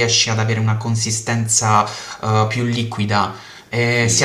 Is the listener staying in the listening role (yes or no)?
no